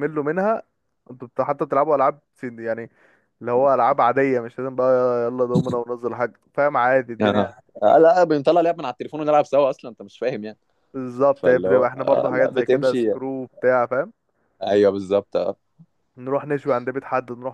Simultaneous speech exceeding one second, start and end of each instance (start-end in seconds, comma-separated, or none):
11.3-13.1